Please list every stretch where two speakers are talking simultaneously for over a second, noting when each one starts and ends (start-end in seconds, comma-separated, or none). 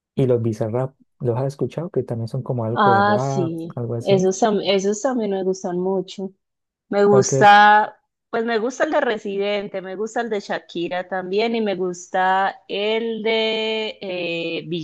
2.7-4.3